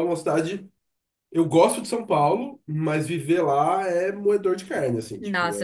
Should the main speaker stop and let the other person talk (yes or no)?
yes